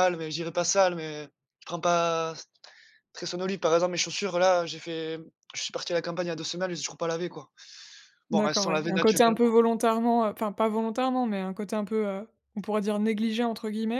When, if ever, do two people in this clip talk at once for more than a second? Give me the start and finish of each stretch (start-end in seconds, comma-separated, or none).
8.3-9.5